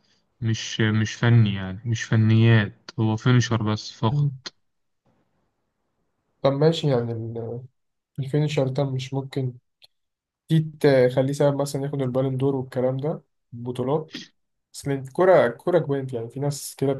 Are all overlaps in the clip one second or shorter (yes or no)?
yes